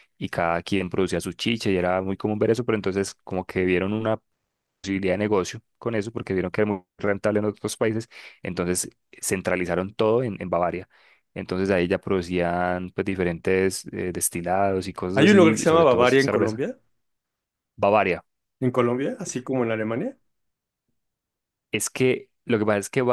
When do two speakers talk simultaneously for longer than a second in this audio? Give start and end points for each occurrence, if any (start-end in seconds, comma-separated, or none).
15.1-16.6